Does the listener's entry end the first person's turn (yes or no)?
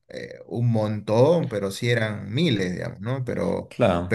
no